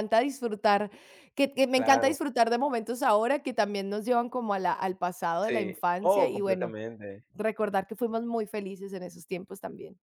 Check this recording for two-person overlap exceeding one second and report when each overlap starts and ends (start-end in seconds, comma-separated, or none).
5.4-6.7